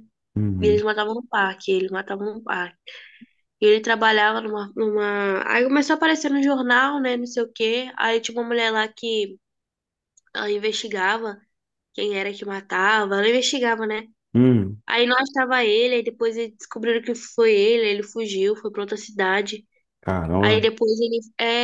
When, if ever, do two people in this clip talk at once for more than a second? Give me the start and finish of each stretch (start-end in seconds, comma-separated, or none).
none